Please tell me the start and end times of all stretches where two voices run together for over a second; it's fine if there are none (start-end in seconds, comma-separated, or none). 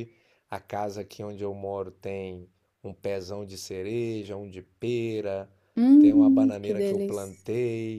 6.0-7.4